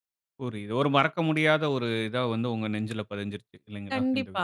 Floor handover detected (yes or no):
yes